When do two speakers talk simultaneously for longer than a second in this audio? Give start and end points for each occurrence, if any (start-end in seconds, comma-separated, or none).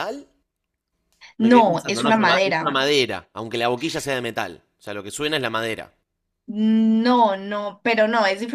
1.4-2.7